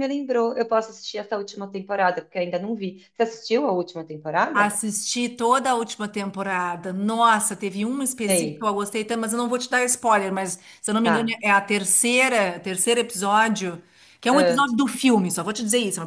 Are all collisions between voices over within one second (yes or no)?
yes